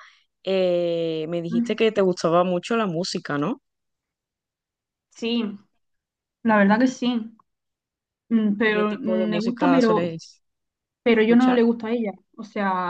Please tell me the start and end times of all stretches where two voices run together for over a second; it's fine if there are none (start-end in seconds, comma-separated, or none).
8.6-10.2